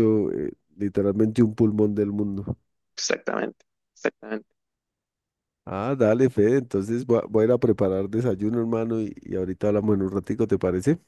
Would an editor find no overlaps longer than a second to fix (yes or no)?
yes